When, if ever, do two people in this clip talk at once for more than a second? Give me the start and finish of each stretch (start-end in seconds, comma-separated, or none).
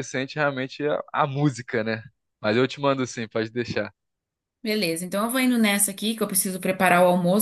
none